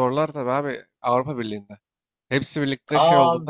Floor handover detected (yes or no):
yes